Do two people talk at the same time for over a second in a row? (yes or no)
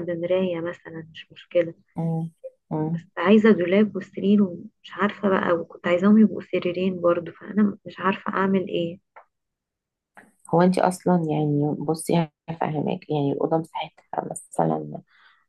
no